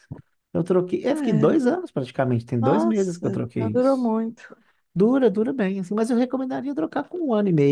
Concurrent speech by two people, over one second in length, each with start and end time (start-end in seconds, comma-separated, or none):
2.6-4.1